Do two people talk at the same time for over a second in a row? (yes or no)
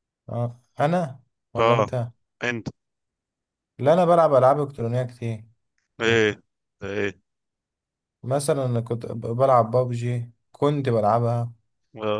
no